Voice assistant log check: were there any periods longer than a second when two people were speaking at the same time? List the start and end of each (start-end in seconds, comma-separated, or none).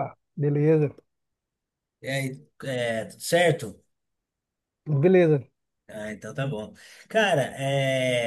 none